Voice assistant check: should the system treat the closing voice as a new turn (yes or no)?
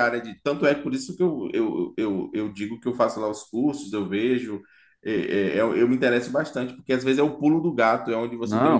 yes